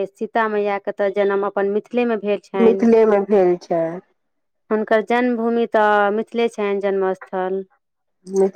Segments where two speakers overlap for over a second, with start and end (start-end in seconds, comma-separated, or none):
none